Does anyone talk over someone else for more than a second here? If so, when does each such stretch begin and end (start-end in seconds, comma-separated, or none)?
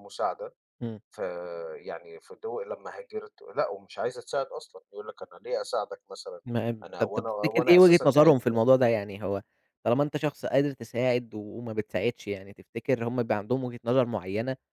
6.8-8.6